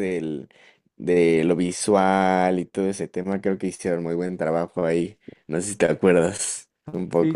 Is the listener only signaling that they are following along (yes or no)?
no